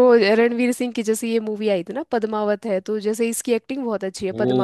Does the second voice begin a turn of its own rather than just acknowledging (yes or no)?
yes